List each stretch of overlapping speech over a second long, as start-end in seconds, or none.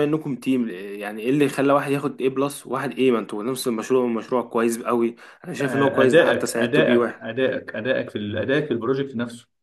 5.6-7.2